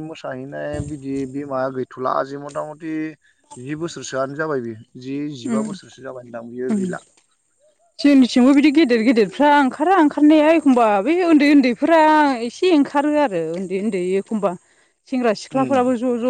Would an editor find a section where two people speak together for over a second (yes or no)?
no